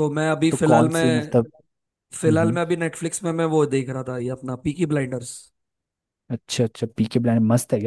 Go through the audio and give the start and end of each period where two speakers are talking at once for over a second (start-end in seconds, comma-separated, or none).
none